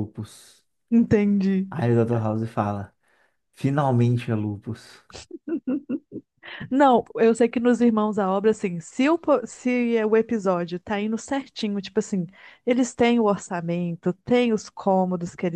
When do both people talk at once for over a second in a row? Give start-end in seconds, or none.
none